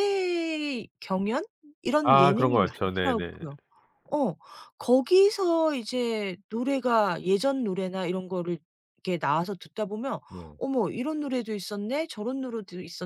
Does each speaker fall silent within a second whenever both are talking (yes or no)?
no